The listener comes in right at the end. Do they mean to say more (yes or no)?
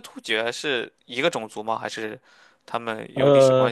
yes